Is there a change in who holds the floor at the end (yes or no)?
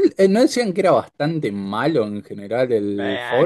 yes